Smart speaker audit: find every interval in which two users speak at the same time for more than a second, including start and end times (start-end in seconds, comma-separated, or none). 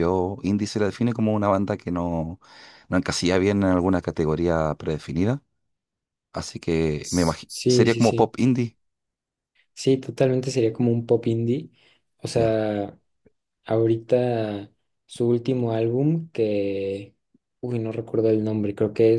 7.0-8.3